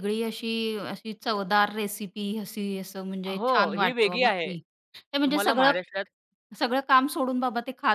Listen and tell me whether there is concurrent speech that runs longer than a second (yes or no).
yes